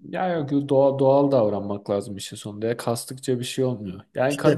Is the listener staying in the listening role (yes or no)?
yes